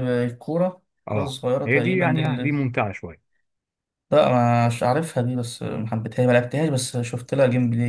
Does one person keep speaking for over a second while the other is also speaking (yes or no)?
yes